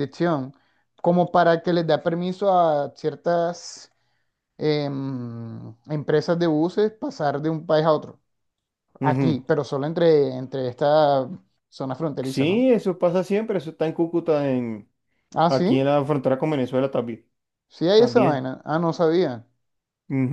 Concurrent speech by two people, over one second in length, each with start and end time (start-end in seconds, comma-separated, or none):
none